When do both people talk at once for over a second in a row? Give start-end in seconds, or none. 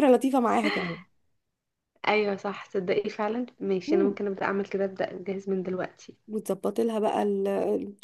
none